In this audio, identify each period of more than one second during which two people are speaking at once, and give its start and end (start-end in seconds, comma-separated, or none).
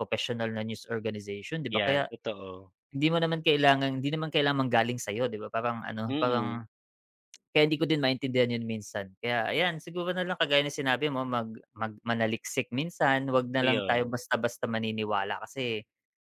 none